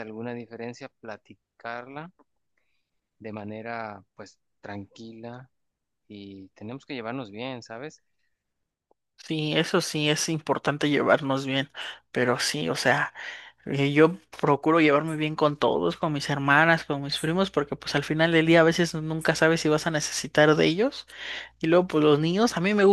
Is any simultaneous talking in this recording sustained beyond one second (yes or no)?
no